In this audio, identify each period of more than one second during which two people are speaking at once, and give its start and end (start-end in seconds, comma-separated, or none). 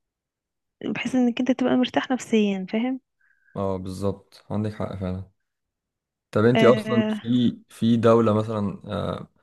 none